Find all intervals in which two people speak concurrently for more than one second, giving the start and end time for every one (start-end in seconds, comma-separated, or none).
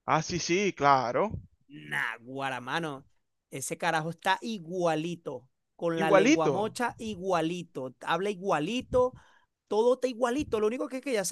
none